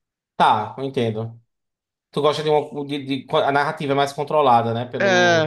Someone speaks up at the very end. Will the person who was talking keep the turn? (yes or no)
no